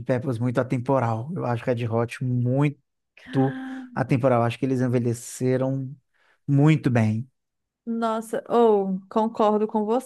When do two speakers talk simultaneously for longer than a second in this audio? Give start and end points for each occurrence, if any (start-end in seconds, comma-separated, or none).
none